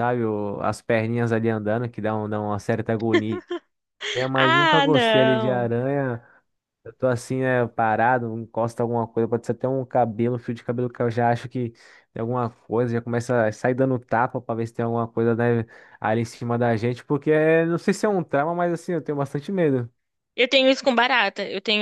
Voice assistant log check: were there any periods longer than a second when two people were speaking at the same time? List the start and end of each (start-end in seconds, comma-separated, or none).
4.3-5.7